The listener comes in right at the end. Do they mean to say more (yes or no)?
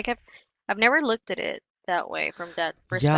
yes